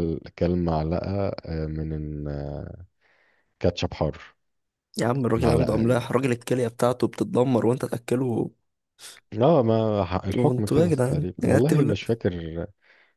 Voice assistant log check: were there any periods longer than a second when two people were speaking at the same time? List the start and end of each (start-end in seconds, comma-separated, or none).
10.3-11.9